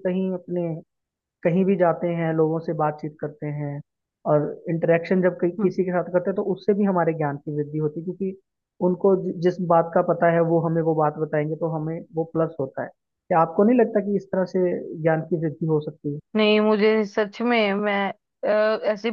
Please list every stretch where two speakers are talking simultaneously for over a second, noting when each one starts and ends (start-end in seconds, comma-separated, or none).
none